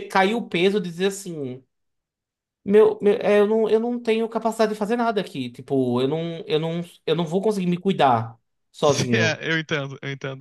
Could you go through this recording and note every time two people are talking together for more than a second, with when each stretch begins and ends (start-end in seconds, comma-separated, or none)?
none